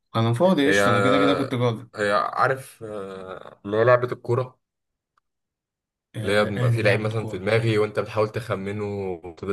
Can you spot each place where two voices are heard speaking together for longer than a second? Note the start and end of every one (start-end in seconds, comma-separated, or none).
6.2-7.5